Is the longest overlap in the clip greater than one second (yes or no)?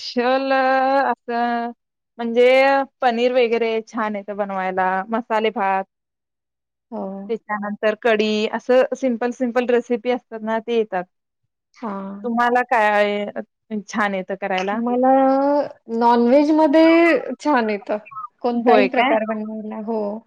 no